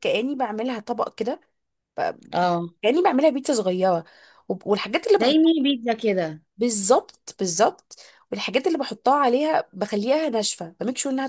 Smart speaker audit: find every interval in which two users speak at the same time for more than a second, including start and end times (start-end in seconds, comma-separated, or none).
none